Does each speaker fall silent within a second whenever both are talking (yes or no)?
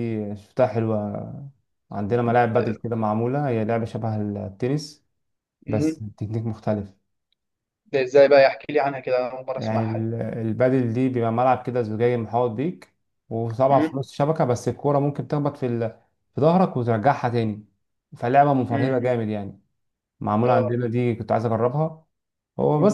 yes